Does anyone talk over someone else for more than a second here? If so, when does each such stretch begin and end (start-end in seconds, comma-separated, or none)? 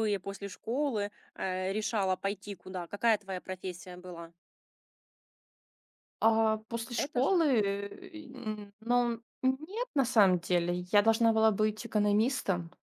none